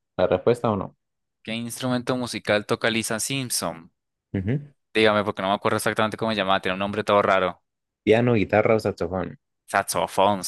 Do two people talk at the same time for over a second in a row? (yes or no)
no